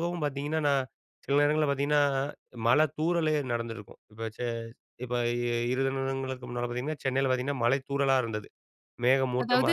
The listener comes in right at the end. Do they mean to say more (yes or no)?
yes